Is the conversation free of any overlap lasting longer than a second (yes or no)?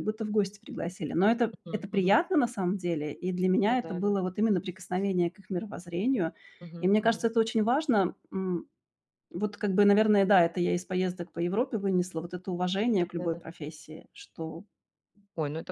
yes